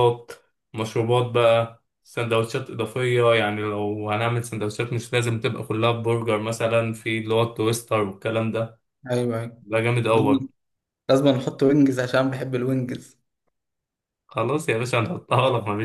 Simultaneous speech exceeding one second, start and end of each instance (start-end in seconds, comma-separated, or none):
none